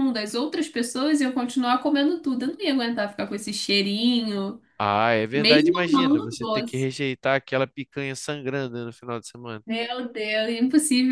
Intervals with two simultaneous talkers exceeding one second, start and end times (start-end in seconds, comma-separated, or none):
5.3-6.9